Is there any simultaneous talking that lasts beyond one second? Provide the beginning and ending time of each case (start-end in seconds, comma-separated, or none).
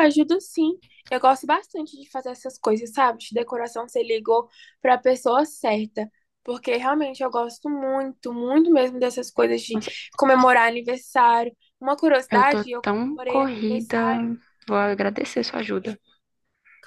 12.3-14.2